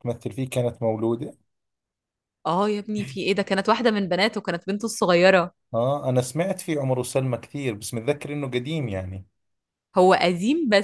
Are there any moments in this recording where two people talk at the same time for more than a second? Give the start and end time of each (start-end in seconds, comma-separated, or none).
none